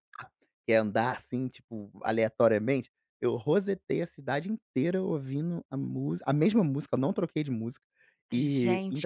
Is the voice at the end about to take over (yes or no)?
yes